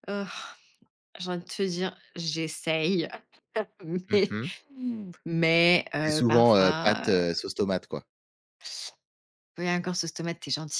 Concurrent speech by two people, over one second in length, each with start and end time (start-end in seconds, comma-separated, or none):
6.0-7.2